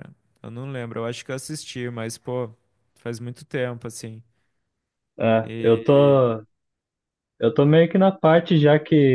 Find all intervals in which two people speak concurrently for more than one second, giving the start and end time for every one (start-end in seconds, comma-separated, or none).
none